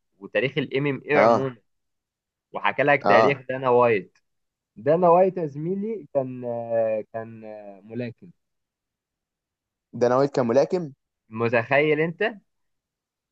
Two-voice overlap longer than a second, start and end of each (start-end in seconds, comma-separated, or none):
none